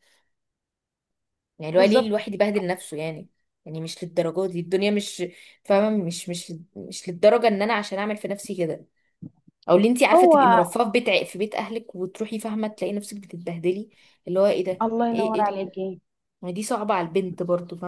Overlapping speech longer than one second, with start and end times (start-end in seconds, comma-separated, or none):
none